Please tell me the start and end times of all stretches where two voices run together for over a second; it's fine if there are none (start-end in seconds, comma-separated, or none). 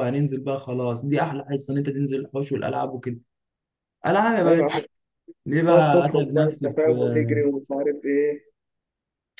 5.7-7.5